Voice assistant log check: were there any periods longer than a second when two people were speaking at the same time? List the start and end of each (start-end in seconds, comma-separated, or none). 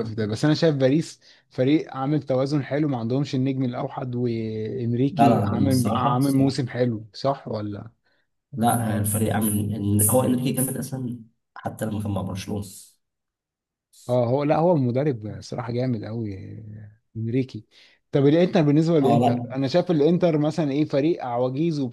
5.1-6.6